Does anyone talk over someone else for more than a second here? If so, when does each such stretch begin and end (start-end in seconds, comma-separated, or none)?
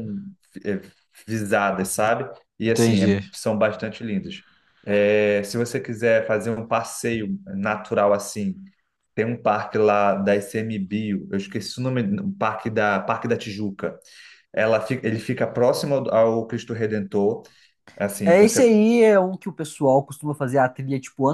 none